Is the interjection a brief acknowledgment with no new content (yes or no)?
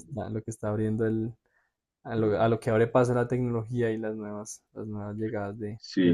no